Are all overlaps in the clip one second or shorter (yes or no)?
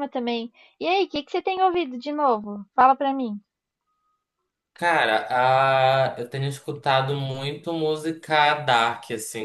yes